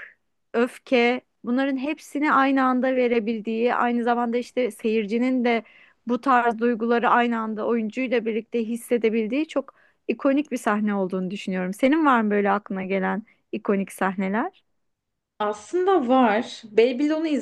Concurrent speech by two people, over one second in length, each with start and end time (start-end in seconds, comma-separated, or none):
none